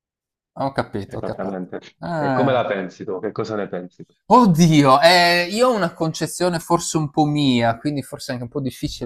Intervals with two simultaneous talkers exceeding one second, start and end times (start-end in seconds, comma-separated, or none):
none